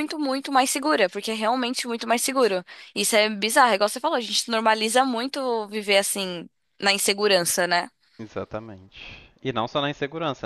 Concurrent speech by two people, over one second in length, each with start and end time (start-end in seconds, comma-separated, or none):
none